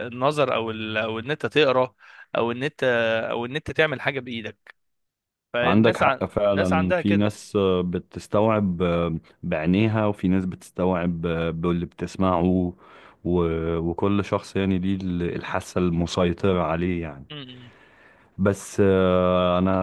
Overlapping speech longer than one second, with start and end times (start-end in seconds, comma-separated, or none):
5.6-7.3